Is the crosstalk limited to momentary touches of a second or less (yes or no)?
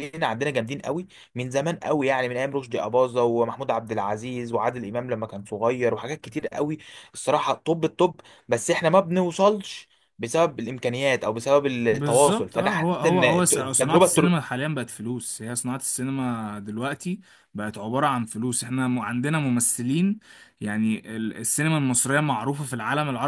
no